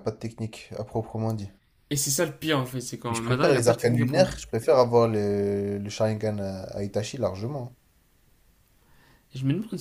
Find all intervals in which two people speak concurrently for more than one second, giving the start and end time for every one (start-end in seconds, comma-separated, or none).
3.1-4.3